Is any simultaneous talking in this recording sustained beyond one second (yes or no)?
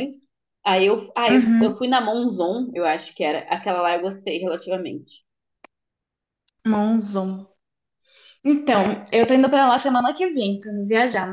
no